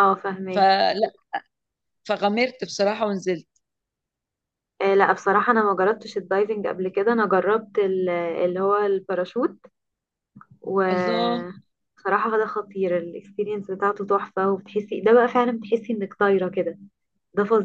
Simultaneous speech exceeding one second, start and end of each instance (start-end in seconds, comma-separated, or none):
none